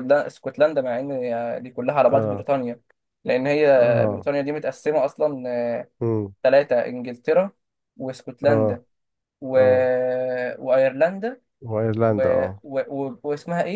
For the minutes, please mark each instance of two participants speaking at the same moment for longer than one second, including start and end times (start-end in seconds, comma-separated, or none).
none